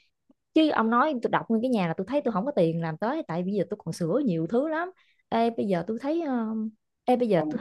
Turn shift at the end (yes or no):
no